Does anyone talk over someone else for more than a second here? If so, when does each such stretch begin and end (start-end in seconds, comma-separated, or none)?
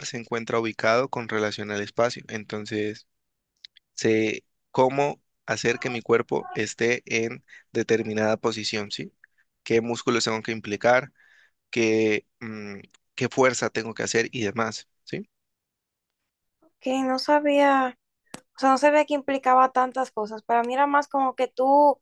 none